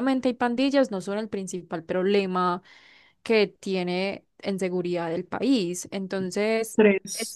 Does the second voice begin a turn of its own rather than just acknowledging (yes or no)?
no